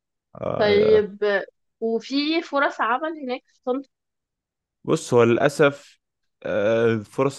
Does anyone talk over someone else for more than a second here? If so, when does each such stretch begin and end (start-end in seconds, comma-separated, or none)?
none